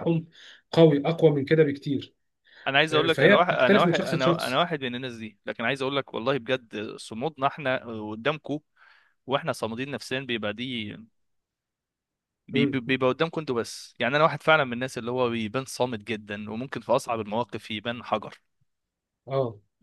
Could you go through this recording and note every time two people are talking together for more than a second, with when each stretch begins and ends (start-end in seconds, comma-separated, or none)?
2.9-4.6